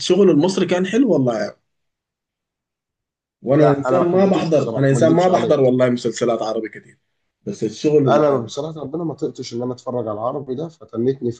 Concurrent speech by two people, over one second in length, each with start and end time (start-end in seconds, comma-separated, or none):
3.6-5.7